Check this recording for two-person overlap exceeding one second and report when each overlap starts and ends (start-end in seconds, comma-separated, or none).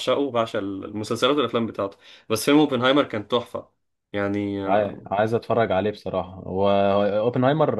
none